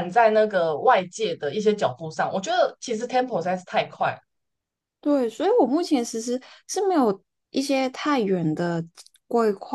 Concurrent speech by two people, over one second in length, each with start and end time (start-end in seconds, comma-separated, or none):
none